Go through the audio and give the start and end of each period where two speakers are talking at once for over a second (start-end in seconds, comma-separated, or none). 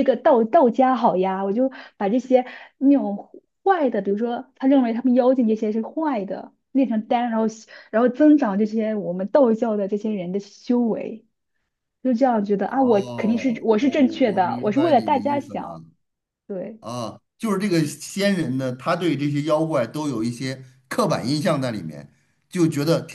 12.6-15.8